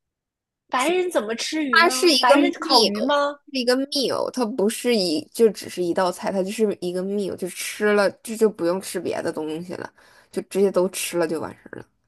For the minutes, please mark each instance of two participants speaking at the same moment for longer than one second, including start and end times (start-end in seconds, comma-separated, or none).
1.7-3.1